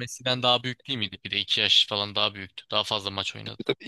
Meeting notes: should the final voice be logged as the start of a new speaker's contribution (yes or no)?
yes